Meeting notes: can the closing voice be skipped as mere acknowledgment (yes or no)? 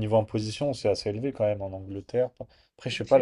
yes